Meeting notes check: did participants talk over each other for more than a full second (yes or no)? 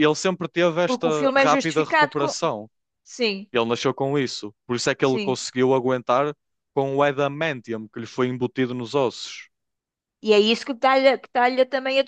yes